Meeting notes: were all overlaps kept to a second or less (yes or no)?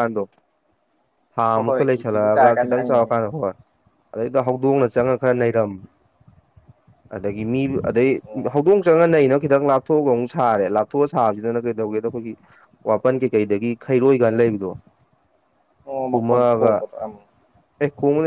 no